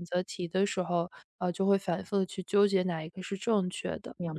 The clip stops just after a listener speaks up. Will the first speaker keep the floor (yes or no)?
no